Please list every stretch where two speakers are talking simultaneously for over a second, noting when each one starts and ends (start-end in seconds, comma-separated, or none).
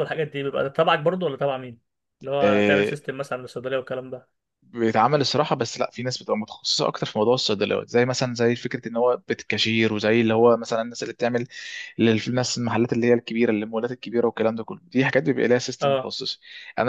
none